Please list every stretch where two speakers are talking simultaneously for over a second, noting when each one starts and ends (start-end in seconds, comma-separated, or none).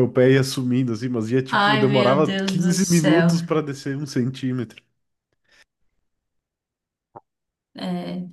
1.5-3.3